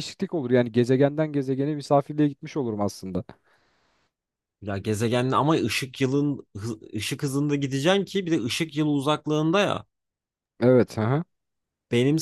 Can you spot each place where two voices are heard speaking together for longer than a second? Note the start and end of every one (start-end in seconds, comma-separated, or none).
none